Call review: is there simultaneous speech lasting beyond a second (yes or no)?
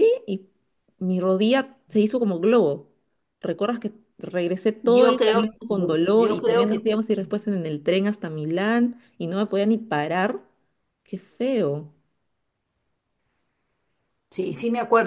yes